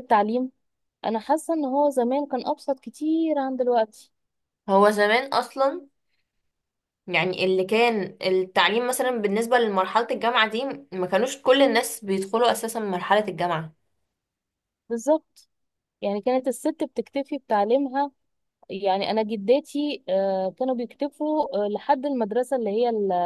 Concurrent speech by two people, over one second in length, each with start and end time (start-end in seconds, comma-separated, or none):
none